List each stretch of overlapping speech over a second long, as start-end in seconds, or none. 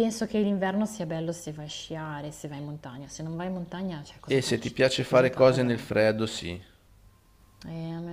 4.3-5.7